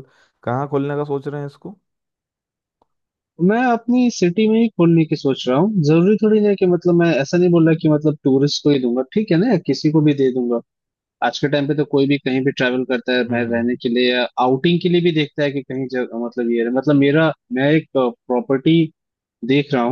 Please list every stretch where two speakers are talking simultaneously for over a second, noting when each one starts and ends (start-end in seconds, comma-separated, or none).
none